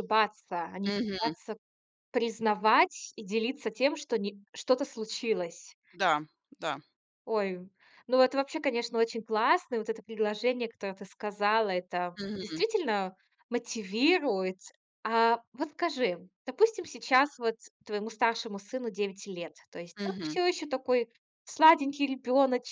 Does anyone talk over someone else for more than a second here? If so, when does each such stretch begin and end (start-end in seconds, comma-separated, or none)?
none